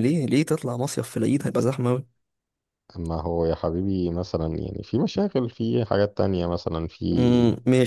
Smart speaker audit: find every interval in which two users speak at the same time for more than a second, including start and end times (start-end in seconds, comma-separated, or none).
none